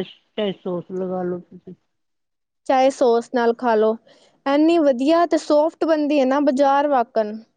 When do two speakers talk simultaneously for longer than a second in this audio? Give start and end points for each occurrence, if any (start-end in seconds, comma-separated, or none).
none